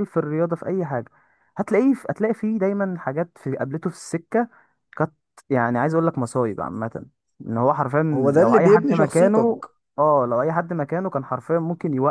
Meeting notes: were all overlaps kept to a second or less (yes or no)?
no